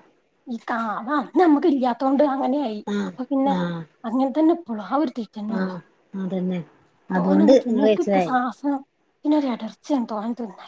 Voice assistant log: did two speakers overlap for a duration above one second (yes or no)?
no